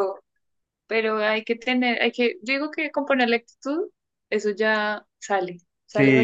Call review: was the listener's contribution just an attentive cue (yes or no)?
no